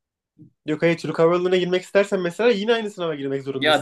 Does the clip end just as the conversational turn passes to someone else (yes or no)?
yes